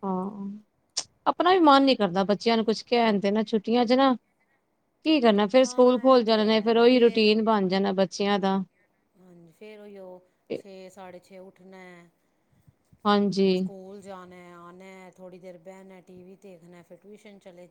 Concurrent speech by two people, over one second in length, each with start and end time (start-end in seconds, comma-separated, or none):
5.6-7.3